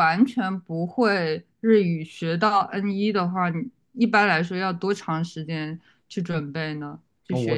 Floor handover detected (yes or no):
yes